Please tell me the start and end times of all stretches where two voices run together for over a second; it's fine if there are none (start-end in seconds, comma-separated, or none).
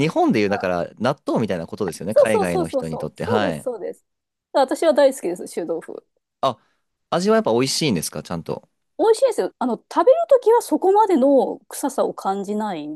2.1-3.6